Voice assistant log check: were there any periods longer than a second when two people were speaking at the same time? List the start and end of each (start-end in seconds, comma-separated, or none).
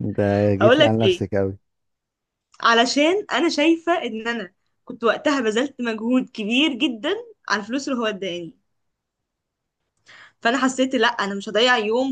none